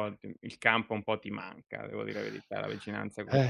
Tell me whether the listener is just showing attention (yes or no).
no